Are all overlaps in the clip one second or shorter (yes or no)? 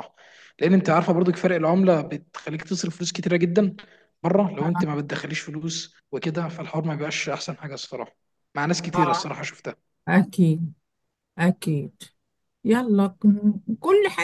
yes